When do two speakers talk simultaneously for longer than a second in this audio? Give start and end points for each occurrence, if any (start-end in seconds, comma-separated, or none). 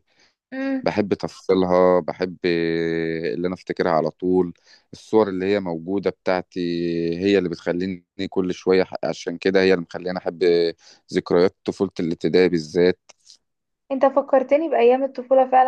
none